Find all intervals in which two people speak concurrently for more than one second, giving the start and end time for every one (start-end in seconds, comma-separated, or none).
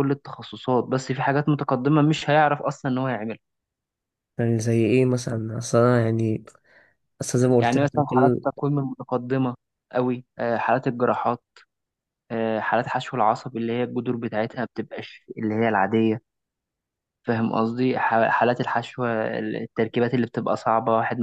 none